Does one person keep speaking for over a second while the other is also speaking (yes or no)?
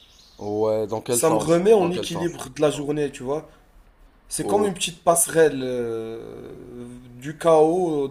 yes